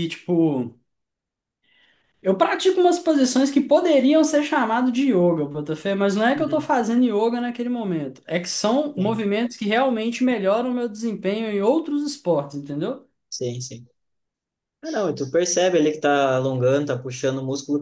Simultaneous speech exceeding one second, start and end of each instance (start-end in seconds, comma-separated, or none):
none